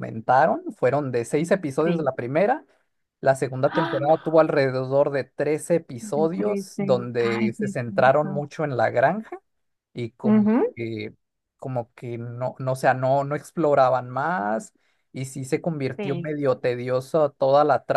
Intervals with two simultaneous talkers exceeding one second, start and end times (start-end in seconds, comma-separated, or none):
6.0-8.4